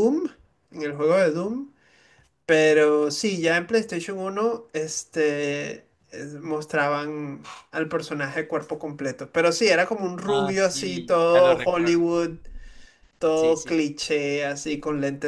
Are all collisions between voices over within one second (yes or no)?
no